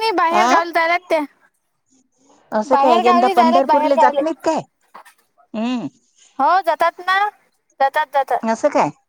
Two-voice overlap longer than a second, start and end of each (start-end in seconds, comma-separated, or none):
2.7-4.2